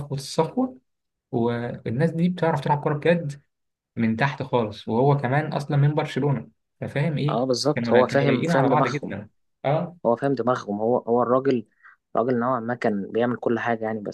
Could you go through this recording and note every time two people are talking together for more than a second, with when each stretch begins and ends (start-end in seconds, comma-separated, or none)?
7.3-9.1